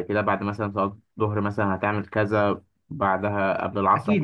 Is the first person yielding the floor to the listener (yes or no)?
yes